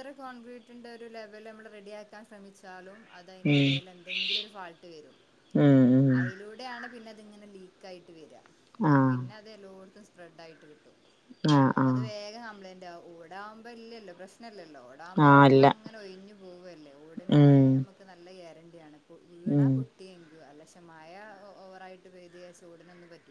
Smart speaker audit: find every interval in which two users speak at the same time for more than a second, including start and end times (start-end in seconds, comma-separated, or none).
none